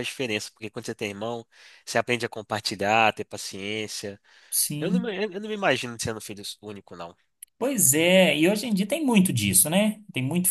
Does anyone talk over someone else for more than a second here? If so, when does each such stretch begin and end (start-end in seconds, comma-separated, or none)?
none